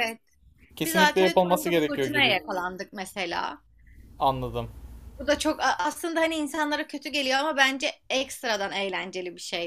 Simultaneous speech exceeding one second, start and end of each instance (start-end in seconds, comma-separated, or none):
0.8-2.4